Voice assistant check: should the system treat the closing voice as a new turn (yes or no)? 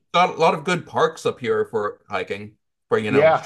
yes